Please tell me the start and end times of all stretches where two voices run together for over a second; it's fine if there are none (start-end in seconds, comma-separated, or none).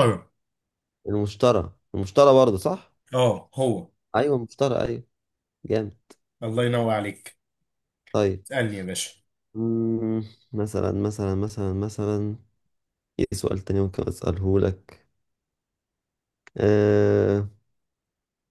none